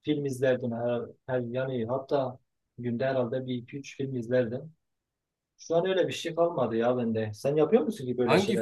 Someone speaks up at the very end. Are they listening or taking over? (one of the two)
taking over